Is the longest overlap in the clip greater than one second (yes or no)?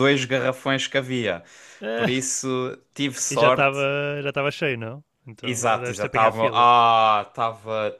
yes